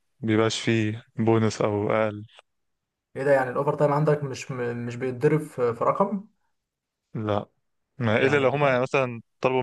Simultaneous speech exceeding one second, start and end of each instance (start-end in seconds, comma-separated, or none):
none